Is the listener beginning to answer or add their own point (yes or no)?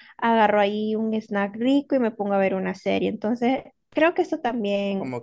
yes